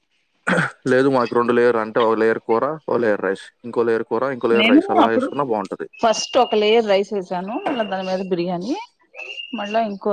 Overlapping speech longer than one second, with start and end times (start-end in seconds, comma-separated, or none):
none